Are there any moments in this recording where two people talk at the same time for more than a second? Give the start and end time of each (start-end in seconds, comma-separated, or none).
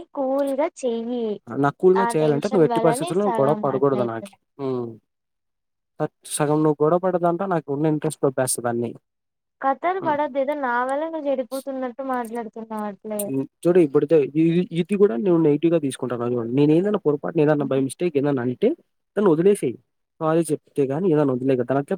2.0-4.3